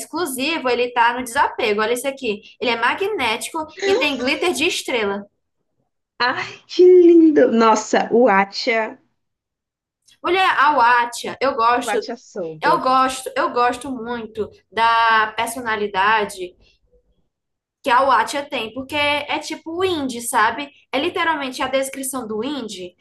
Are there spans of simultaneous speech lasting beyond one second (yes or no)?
no